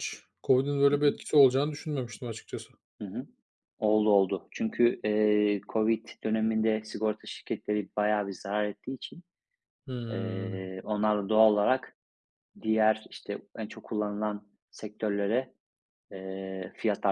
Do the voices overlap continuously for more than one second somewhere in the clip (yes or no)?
no